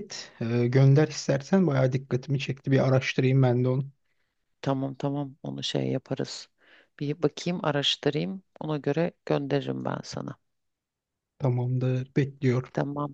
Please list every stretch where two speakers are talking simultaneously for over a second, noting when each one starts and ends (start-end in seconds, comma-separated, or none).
none